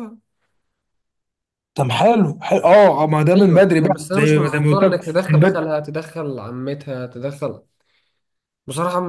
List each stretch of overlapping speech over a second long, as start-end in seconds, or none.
3.4-5.7